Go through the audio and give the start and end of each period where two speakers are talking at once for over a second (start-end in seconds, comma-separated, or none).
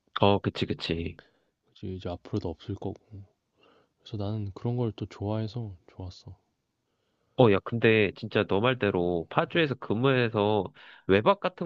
none